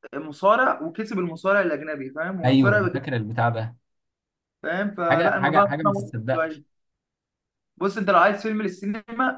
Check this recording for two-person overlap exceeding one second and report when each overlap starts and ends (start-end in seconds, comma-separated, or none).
5.1-6.6